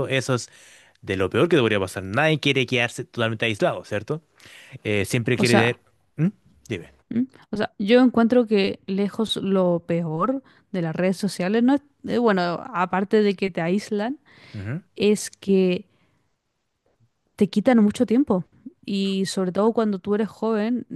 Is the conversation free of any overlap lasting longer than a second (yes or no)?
yes